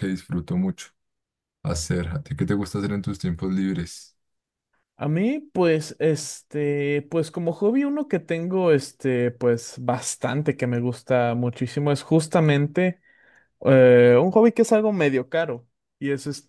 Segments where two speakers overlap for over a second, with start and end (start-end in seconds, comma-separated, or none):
none